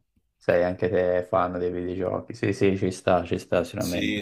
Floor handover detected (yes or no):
yes